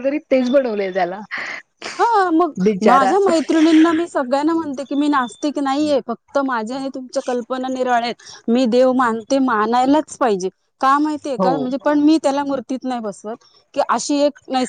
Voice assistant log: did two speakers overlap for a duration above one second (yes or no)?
no